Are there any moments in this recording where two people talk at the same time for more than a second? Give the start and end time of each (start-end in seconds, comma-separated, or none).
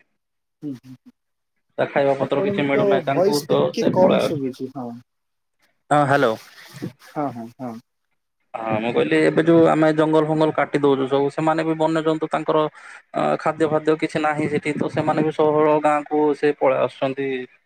2.2-4.5